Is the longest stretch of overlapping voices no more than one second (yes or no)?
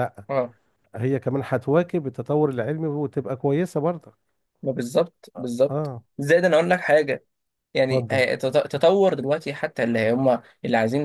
yes